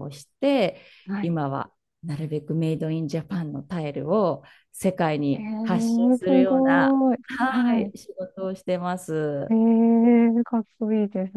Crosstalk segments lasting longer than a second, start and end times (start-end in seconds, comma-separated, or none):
5.3-7.9